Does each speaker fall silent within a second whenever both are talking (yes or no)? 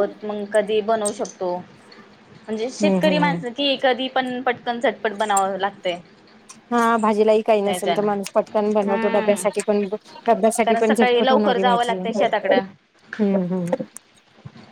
no